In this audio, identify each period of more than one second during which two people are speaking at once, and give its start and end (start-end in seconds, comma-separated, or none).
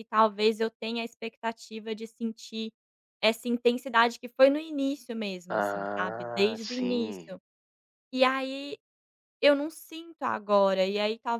5.6-7.3